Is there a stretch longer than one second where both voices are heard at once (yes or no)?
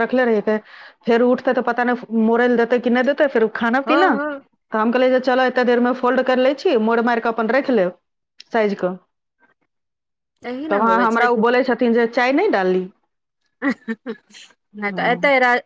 no